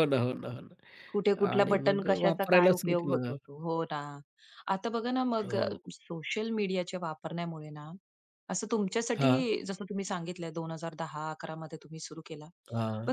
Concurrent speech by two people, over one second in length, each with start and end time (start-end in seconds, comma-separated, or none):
1.6-3.4